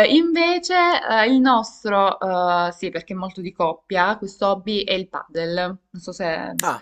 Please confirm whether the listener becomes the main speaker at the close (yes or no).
yes